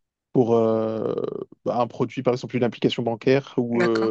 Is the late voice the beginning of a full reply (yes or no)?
no